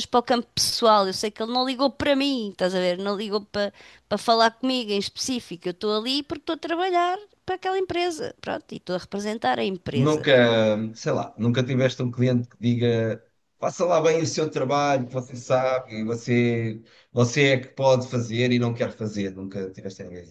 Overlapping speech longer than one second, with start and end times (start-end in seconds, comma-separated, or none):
none